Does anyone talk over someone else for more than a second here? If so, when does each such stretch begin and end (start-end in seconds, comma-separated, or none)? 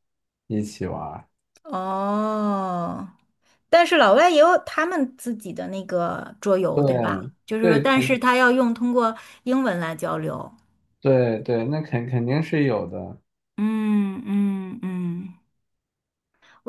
6.8-8.1